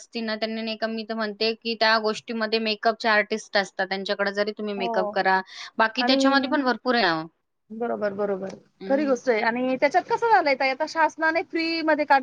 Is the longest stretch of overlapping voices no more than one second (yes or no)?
yes